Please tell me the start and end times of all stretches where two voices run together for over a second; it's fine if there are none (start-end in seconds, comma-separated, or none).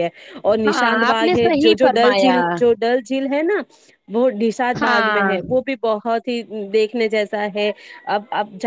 0.7-2.4